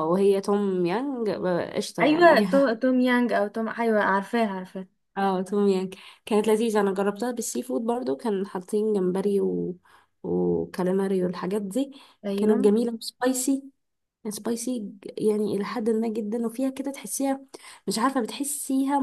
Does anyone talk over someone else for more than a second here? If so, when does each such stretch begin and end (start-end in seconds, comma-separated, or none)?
none